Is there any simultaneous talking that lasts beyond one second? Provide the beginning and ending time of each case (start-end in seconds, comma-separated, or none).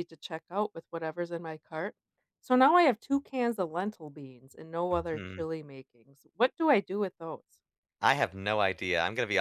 none